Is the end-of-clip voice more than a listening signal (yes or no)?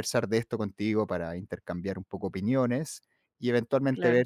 no